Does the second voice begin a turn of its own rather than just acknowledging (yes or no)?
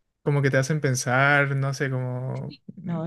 yes